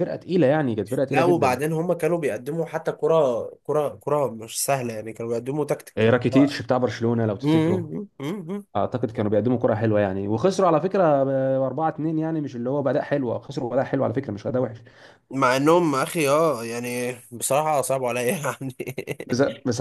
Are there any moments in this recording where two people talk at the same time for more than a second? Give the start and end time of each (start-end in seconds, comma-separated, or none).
none